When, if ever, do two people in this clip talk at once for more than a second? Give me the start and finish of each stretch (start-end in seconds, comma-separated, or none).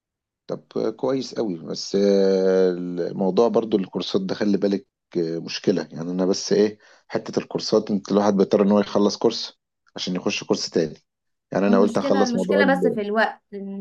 11.7-13.0